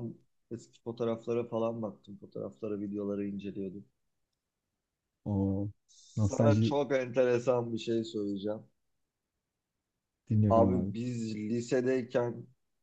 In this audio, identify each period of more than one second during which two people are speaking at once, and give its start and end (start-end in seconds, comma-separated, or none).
none